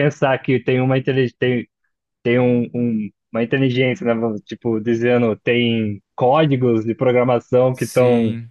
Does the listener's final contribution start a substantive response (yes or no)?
no